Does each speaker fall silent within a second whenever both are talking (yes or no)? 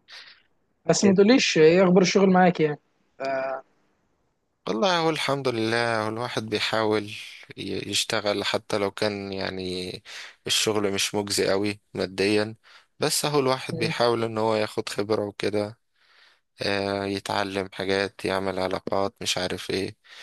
yes